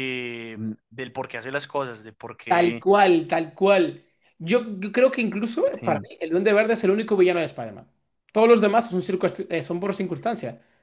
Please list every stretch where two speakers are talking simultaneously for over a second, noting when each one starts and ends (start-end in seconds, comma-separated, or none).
none